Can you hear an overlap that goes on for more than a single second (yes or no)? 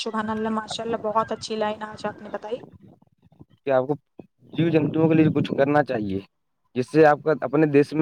no